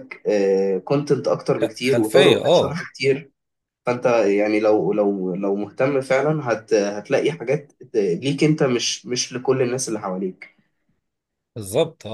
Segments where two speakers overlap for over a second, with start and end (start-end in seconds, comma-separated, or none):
1.6-2.8